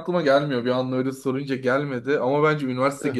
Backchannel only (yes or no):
yes